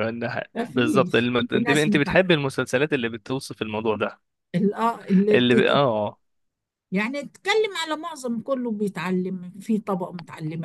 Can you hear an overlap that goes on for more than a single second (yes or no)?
yes